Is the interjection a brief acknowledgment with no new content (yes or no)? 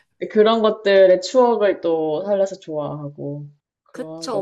no